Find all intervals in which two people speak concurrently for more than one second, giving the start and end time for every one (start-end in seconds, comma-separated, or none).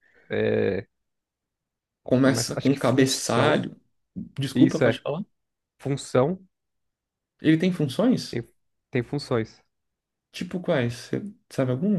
2.2-3.6